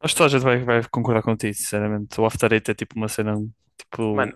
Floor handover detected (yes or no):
no